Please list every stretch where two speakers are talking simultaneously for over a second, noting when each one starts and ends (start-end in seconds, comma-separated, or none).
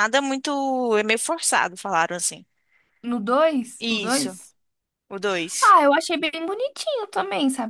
none